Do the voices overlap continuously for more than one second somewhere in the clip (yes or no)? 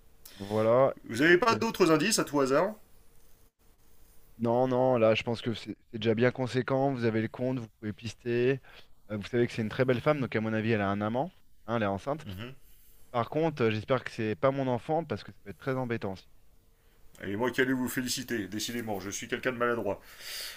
no